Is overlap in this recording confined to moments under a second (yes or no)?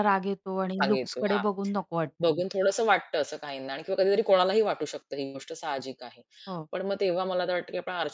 yes